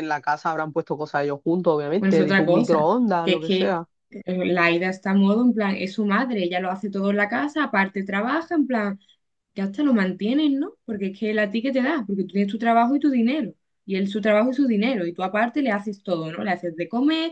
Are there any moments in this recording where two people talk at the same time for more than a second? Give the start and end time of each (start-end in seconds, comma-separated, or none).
2.0-3.9